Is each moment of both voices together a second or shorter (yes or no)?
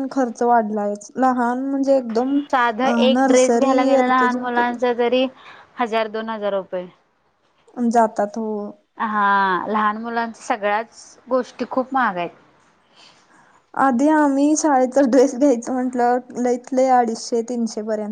no